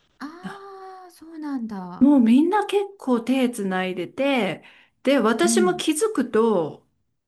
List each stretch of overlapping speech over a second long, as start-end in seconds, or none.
none